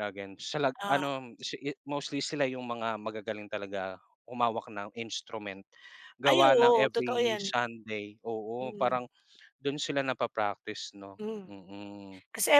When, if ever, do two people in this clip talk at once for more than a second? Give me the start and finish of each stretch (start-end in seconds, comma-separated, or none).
6.2-7.5